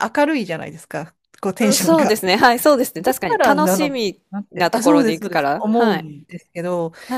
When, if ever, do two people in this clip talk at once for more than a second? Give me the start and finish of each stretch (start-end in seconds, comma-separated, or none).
3.1-6.0